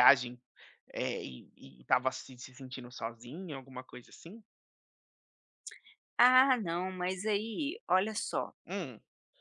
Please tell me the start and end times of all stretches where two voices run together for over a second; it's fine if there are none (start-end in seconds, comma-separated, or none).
none